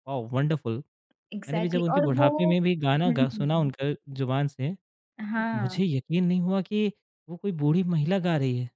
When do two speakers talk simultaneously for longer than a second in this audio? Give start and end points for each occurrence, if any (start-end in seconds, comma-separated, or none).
1.5-3.7